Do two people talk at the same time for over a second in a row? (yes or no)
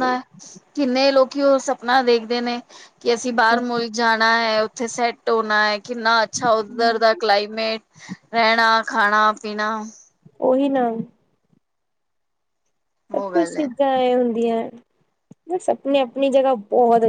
no